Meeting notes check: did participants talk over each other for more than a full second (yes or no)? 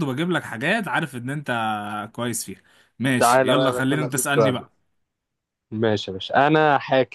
yes